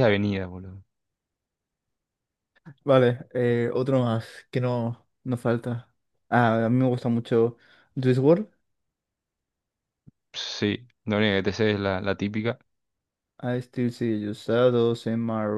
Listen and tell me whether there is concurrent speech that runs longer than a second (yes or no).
no